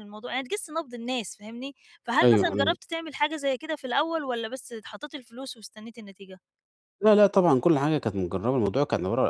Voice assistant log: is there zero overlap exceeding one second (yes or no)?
yes